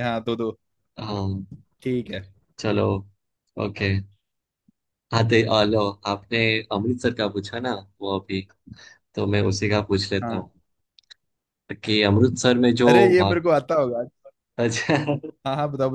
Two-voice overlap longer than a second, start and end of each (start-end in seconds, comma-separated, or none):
none